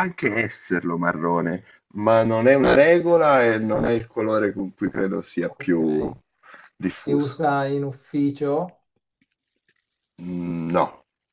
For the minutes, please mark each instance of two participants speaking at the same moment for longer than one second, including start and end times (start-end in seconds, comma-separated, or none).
none